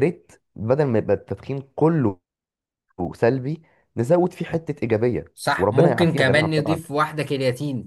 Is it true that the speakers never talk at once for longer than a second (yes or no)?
no